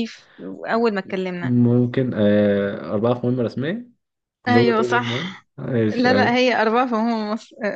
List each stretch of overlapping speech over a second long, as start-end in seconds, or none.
none